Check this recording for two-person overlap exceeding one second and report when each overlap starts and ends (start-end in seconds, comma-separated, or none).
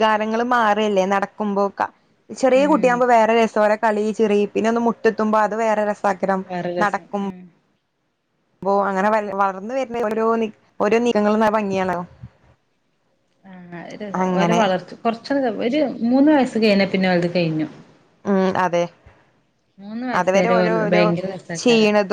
none